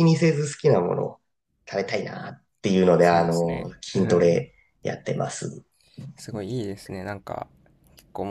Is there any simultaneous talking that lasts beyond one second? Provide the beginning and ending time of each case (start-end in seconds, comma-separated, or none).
3.0-4.4